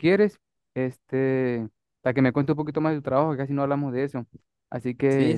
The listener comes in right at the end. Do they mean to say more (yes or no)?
yes